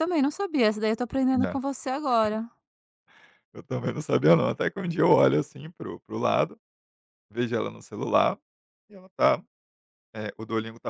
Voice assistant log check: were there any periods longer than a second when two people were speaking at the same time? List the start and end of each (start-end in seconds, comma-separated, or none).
none